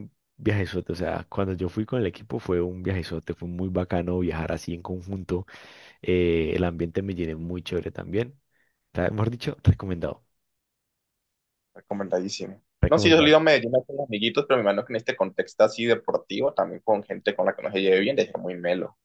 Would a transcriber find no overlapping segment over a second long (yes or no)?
yes